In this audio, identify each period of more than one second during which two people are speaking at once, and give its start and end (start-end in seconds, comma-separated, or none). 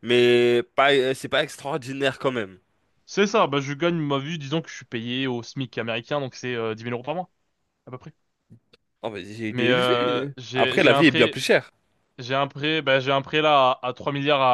9.5-11.4